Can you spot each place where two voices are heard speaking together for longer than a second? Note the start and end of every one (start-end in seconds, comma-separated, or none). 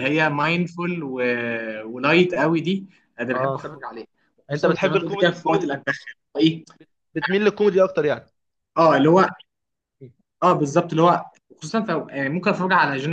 4.5-5.7